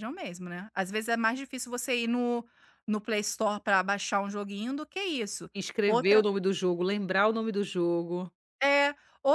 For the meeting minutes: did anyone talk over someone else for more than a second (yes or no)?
no